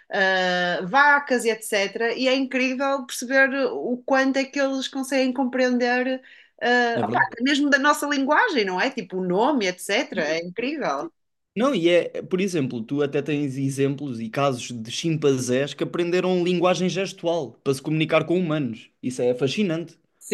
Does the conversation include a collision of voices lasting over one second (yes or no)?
no